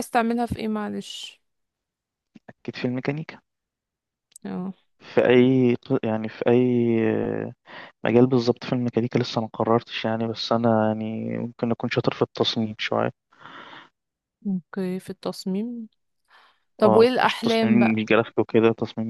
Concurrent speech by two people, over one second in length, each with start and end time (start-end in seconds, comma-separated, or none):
16.9-18.1